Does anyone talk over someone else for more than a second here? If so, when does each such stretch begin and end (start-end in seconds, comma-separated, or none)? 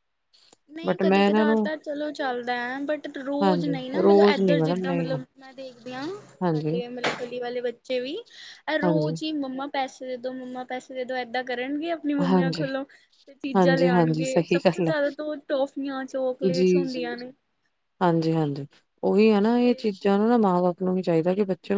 3.4-5.2, 13.6-14.9